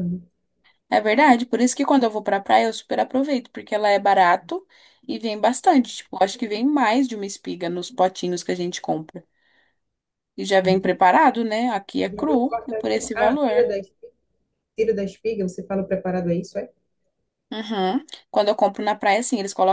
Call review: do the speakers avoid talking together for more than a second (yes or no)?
no